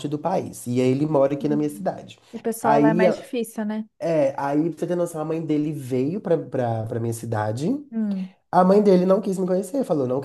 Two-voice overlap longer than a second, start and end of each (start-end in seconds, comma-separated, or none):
none